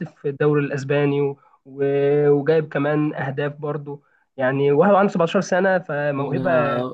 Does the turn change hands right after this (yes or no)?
yes